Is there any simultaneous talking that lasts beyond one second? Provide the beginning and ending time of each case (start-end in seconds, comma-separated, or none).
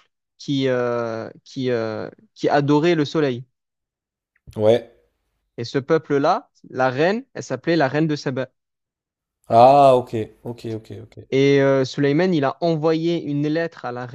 none